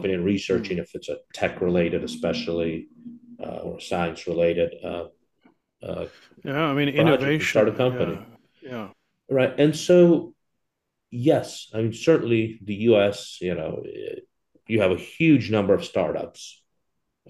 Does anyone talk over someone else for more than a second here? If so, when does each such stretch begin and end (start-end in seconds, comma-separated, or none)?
7.0-8.2